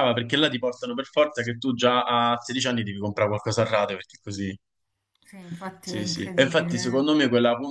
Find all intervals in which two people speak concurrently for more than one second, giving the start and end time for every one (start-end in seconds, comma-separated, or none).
5.8-7.1